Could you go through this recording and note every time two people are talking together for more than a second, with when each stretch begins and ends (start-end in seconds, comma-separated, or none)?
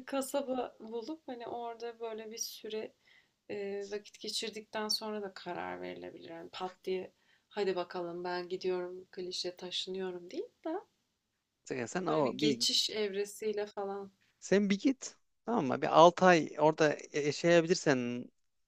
none